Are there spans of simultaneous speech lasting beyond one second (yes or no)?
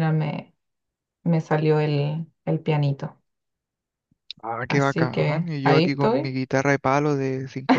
yes